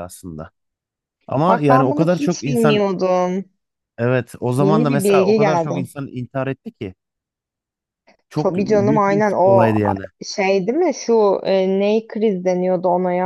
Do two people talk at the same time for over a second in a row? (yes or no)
yes